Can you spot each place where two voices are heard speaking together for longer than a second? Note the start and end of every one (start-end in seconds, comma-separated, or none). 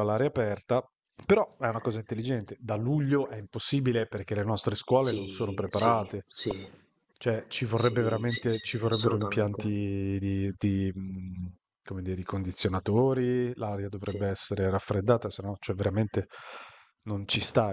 5.0-6.2, 7.7-9.7